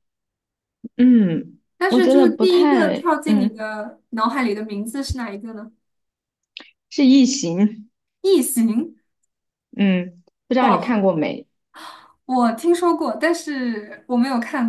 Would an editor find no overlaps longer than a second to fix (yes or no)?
no